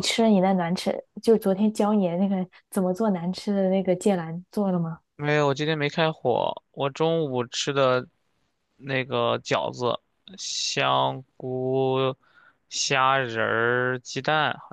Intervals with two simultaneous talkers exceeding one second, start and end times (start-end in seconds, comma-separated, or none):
none